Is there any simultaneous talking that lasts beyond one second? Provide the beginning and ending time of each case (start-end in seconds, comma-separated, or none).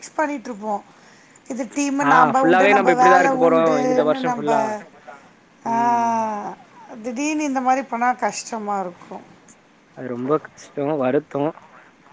2.1-4.5